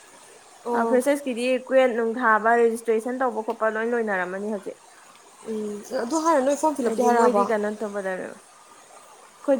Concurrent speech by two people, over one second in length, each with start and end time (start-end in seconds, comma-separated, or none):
none